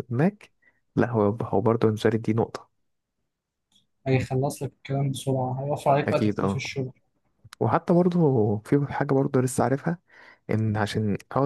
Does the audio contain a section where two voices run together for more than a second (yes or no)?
no